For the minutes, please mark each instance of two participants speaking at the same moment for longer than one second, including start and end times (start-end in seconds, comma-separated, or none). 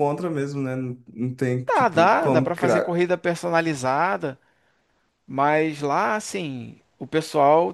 1.6-3.0